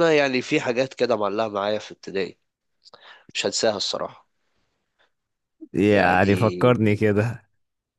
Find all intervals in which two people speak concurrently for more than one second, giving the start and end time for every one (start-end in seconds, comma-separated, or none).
5.9-7.3